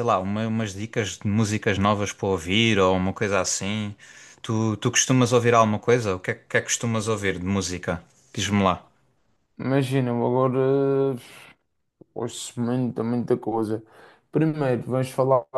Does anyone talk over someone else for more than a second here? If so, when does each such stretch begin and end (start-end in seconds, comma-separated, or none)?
none